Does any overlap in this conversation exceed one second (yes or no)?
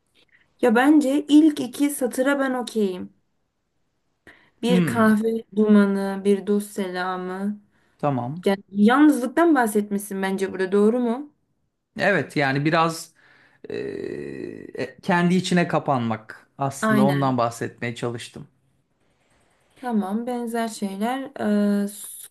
no